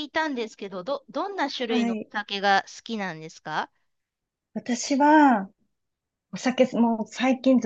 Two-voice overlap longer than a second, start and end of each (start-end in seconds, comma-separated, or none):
none